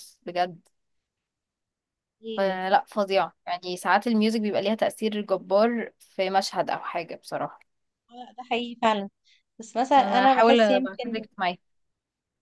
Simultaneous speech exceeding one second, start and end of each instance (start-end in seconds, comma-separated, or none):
10.0-11.2